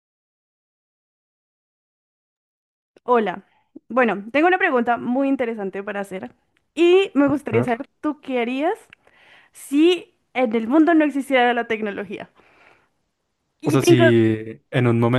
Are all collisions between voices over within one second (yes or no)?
yes